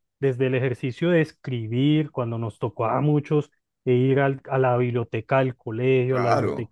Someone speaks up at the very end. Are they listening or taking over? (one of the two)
listening